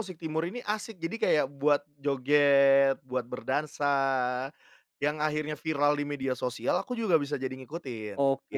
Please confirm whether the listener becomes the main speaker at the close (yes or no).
yes